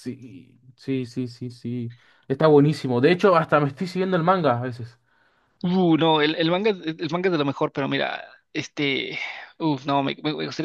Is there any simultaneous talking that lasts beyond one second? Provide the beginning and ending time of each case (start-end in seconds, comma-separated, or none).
none